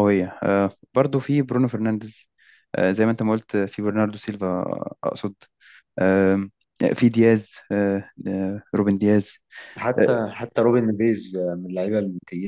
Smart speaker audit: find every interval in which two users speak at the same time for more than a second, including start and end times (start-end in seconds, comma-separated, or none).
none